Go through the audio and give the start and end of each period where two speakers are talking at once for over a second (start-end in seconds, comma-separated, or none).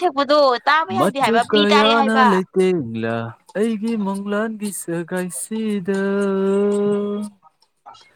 1.0-2.4